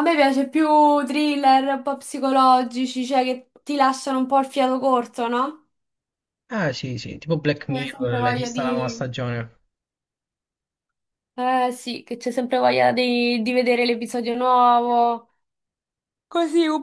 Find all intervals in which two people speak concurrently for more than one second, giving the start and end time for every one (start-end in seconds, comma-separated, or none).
7.7-9.1